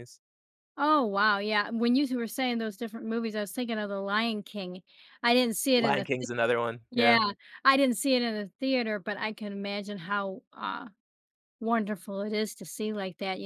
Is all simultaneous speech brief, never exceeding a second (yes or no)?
yes